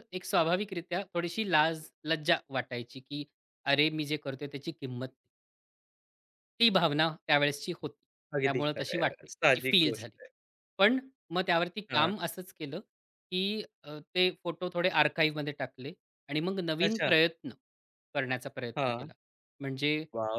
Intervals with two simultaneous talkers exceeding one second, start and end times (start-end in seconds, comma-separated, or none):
8.4-10.2